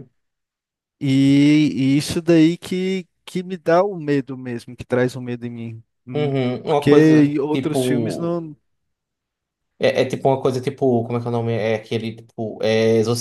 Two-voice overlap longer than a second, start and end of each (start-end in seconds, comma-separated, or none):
6.1-8.4